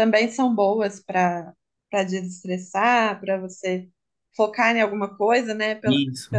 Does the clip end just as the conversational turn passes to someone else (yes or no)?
no